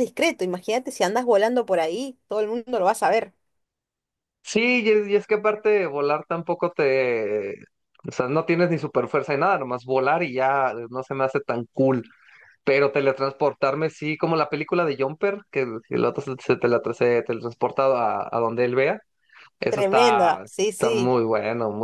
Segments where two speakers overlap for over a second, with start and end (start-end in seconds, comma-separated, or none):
19.7-21.2